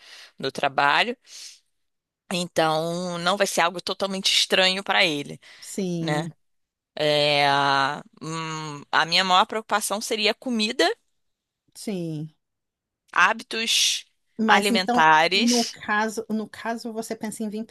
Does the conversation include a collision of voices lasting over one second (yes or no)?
yes